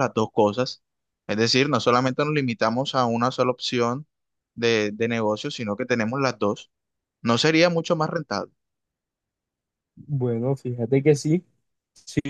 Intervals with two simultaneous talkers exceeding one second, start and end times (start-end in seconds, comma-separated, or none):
none